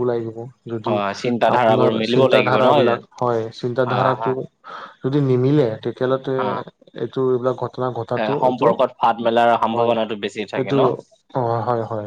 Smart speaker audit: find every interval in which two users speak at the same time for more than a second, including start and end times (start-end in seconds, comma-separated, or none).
1.6-3.1